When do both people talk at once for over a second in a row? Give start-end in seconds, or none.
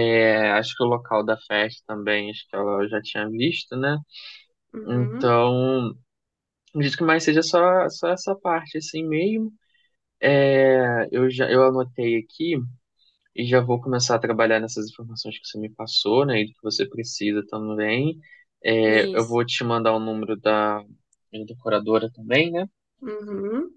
none